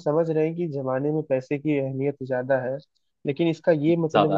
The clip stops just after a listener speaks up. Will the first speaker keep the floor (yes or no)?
yes